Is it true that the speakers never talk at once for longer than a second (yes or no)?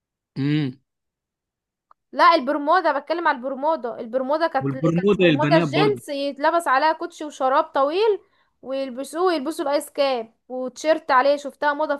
no